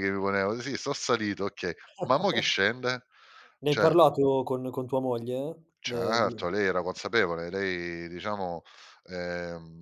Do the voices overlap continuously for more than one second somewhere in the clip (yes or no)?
no